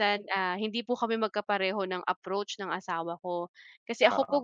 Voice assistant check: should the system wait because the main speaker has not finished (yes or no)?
yes